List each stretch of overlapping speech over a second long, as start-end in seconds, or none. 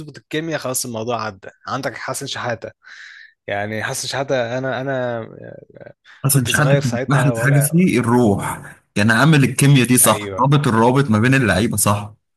6.3-7.9